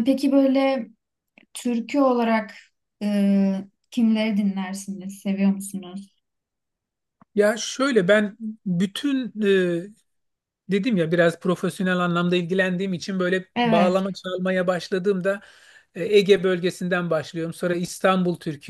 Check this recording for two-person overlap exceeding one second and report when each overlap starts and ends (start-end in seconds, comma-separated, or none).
none